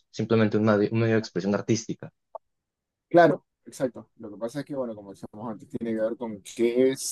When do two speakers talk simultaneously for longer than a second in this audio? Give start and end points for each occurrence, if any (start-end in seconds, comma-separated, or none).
none